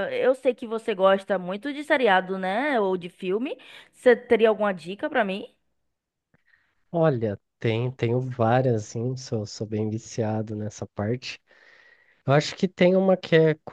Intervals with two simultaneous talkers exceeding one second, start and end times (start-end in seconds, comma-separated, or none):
none